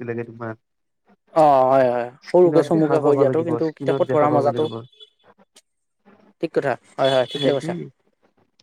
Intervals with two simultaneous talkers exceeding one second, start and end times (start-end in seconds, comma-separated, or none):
2.3-4.6